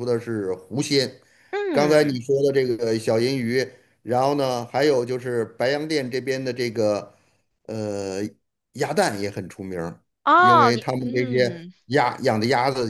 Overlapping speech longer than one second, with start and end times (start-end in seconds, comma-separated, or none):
10.4-11.7